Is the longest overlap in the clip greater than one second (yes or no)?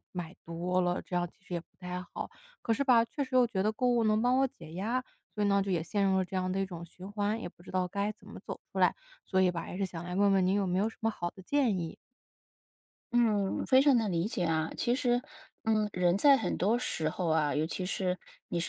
no